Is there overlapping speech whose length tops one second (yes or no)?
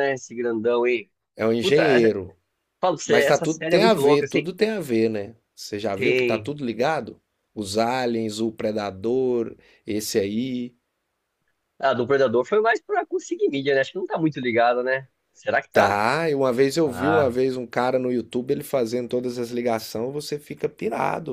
yes